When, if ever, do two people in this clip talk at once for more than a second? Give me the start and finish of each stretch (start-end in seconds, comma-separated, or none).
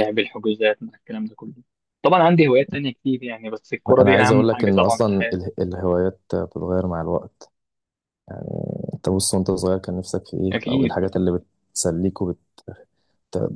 4.0-5.4